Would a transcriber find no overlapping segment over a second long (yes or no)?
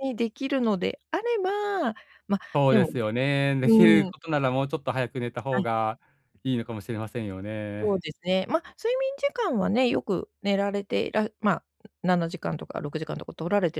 yes